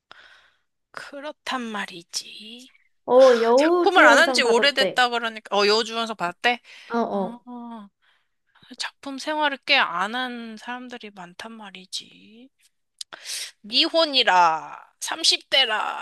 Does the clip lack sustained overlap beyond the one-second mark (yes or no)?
no